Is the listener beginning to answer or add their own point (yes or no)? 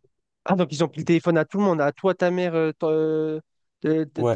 yes